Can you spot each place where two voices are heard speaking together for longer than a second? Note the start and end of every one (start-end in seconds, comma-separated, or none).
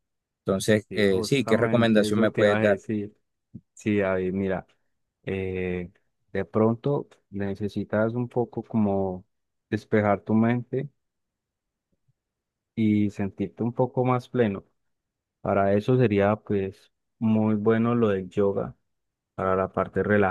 0.9-2.8